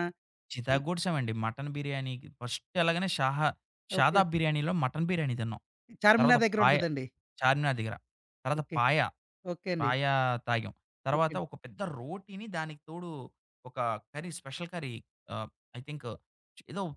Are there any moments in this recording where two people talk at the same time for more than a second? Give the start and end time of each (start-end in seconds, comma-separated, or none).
none